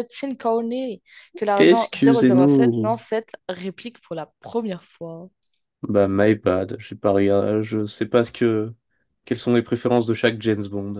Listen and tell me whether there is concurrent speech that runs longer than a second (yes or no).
yes